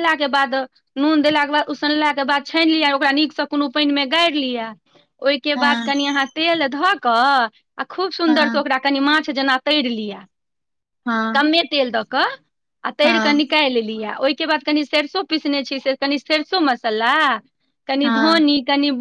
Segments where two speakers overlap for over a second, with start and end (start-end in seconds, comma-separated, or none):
none